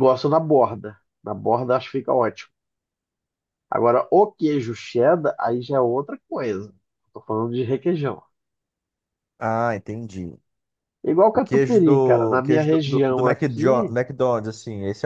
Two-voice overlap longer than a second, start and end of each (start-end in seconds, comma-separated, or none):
11.3-13.9